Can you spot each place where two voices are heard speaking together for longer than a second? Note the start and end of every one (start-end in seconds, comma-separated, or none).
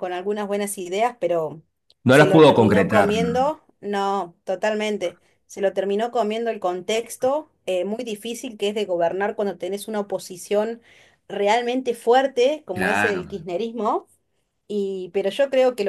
2.1-3.5